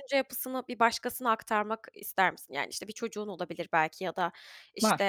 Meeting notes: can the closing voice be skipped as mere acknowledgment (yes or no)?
yes